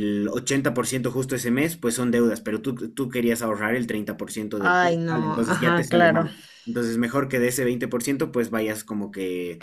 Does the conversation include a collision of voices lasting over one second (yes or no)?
yes